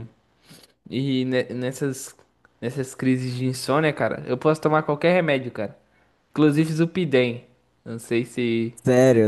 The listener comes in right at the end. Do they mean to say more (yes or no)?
yes